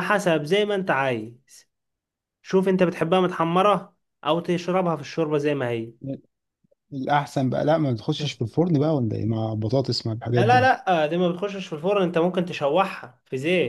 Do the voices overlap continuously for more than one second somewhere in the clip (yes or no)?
no